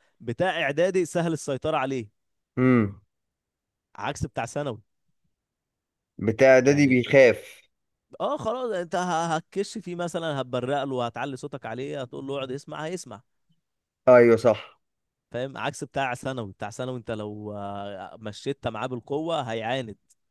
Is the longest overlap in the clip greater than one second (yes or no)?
no